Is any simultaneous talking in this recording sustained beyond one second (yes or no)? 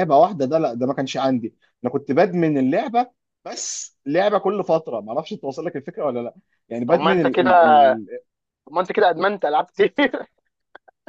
no